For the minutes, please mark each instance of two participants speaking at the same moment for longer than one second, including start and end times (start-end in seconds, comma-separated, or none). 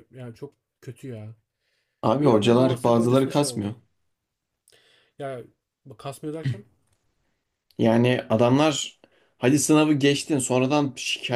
2.2-3.7